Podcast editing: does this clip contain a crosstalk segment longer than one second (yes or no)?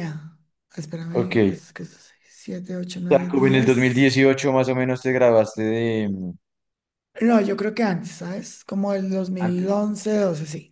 yes